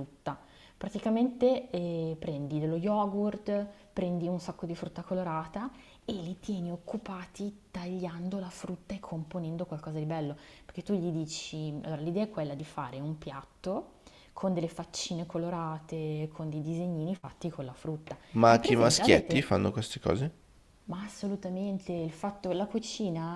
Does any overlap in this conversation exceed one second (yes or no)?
yes